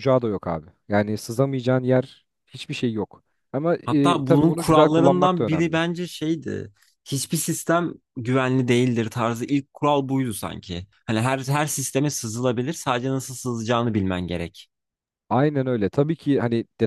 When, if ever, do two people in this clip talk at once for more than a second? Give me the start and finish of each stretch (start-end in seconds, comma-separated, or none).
3.8-5.8